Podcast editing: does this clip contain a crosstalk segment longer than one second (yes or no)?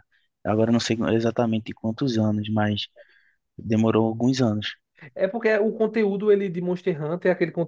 no